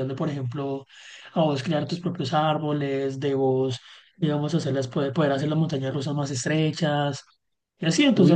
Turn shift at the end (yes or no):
yes